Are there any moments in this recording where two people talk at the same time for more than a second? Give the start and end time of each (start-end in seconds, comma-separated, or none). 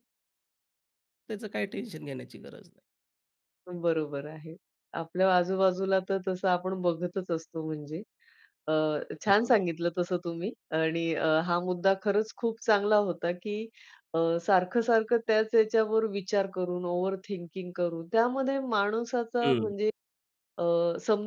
none